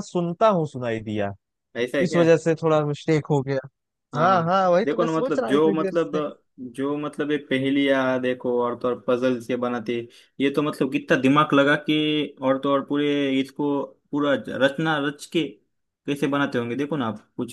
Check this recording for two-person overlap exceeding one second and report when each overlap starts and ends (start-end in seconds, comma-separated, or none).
4.2-6.1